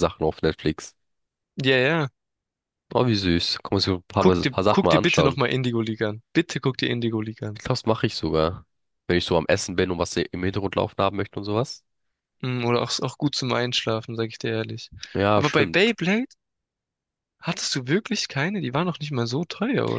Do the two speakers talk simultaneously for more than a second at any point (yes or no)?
yes